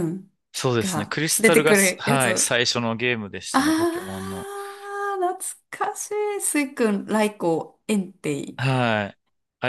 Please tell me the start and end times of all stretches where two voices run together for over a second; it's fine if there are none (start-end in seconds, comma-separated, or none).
0.8-2.5